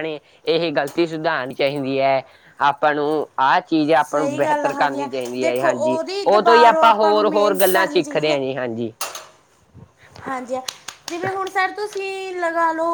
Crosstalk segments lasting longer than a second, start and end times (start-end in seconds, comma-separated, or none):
4.0-8.4